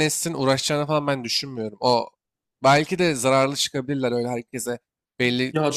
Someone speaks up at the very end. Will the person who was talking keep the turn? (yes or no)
no